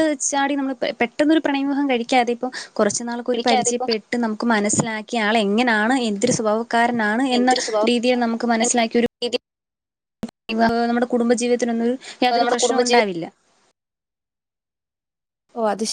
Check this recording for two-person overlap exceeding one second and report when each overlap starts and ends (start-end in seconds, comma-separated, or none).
none